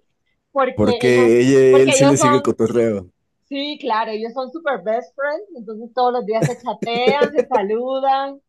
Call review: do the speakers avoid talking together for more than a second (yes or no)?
no